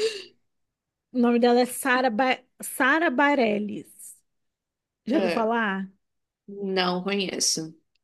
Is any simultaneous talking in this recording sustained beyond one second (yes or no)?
no